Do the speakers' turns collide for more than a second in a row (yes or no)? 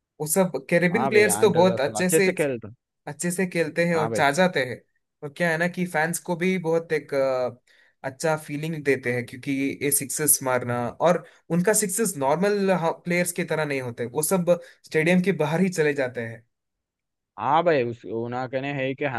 yes